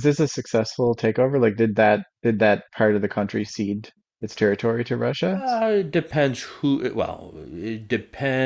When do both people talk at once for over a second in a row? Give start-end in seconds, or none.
none